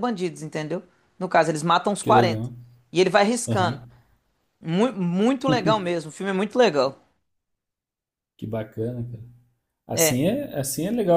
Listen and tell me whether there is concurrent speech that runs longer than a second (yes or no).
no